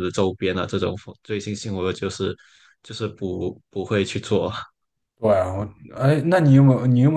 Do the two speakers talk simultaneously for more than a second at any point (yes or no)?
no